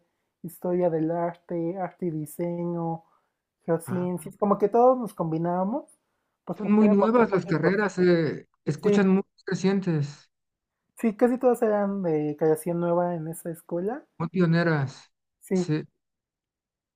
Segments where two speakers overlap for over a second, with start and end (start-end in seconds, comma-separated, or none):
6.6-7.8